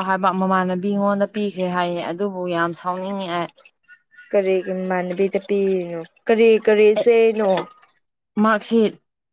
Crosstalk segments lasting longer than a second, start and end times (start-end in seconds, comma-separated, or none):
none